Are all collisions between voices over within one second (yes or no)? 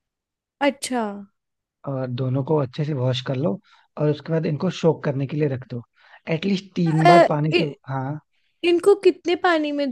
yes